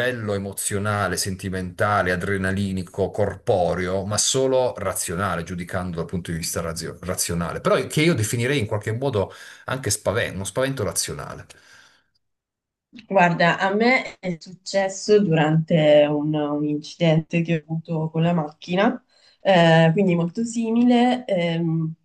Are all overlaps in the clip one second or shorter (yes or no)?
yes